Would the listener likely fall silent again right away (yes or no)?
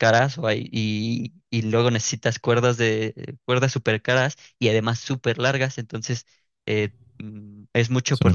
yes